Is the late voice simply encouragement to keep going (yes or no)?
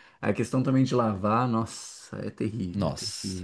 no